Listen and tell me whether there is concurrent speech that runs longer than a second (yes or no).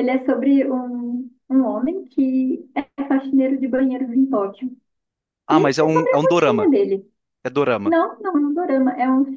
yes